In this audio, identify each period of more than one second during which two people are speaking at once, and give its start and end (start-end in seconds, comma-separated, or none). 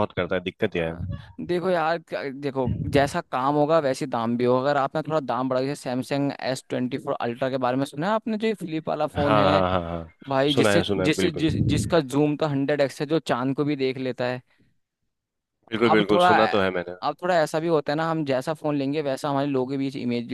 10.6-12.0